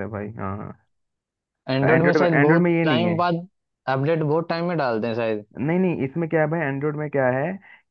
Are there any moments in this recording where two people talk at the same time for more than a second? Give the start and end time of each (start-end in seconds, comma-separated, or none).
1.8-3.2